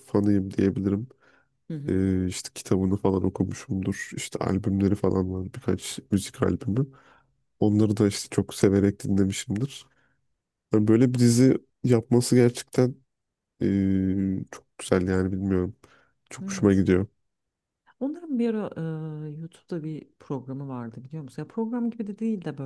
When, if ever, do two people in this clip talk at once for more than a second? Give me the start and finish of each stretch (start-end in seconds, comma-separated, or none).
none